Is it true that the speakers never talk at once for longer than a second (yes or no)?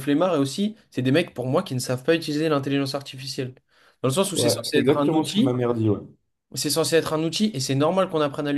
no